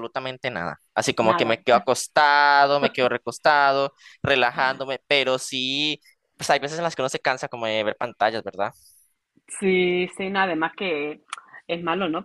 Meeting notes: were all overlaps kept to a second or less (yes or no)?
yes